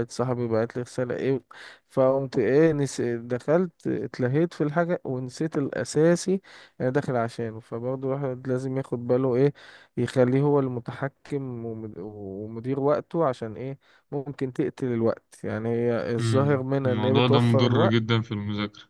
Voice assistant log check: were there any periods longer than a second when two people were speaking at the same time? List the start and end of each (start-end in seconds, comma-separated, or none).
16.2-18.1